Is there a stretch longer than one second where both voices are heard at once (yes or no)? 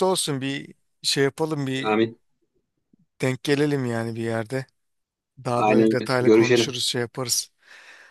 yes